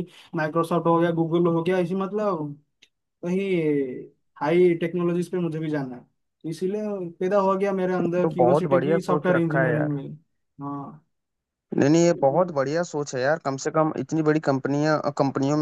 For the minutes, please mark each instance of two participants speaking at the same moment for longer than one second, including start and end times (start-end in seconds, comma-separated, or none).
8.2-10.0